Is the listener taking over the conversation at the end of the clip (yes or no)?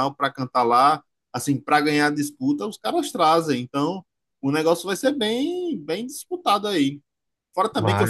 no